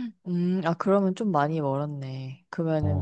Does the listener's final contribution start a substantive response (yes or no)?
no